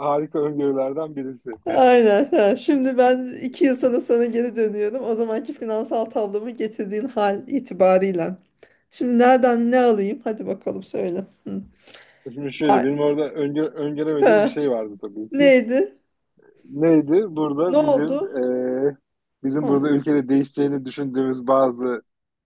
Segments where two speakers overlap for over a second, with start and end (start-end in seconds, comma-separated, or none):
none